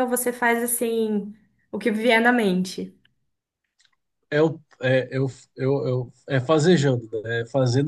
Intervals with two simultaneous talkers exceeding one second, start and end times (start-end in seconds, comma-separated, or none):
none